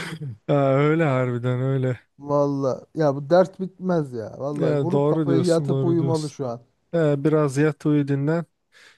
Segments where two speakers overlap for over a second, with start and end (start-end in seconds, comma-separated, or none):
4.5-6.4